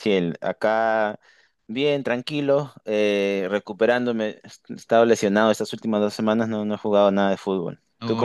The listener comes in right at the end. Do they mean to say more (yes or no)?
yes